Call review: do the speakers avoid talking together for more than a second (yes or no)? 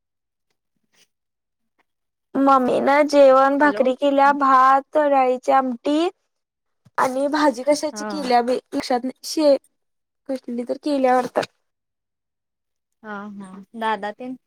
yes